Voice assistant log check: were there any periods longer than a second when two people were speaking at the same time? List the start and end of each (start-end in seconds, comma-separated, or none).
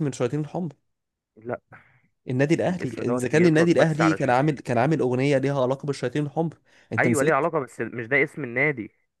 2.7-4.3